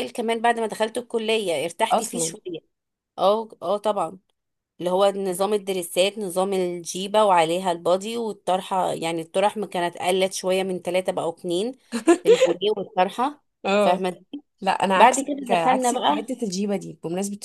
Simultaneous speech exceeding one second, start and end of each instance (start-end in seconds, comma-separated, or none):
14.9-16.4